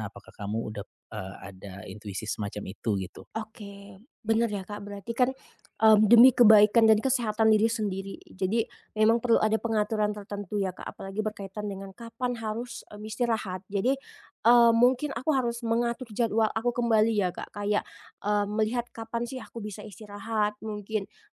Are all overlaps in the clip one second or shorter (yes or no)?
yes